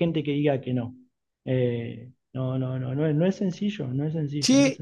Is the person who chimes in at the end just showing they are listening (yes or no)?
no